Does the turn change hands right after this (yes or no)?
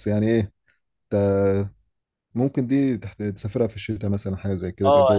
yes